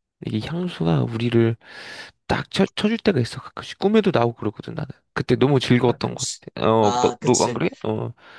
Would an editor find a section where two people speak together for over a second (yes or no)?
yes